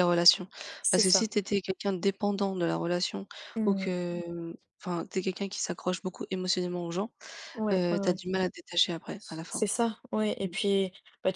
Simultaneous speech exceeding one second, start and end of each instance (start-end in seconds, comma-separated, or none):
none